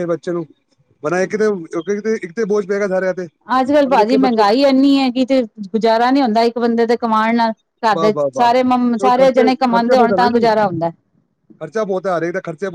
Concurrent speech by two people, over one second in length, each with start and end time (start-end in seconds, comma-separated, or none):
9.2-10.9